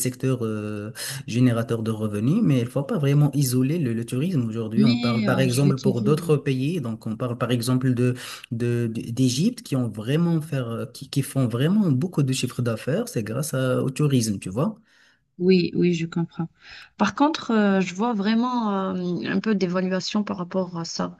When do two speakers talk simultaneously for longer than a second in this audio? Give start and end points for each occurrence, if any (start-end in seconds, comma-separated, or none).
4.8-6.2